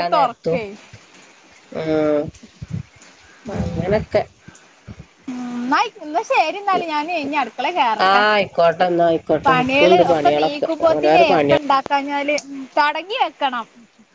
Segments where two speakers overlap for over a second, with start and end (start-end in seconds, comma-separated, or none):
9.4-11.6